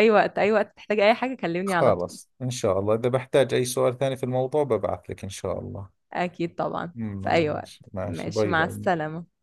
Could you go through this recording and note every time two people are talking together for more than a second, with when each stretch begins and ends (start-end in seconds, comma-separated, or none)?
7.0-8.9